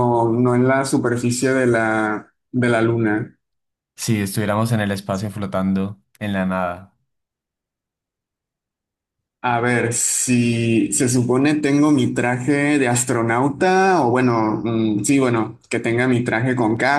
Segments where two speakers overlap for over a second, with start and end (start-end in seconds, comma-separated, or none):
none